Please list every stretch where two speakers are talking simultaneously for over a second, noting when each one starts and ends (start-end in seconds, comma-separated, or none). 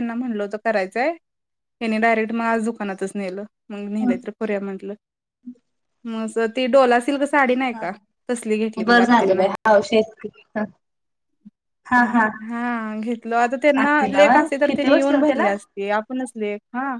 13.8-15.5